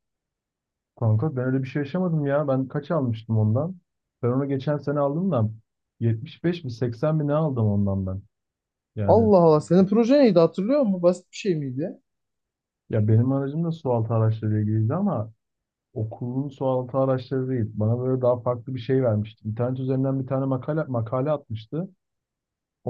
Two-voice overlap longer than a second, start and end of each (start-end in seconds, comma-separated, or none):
none